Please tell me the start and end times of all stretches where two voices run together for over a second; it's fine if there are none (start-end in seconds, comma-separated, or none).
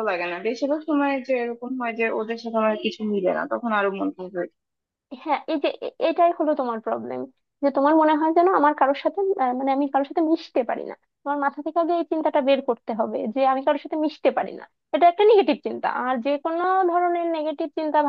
none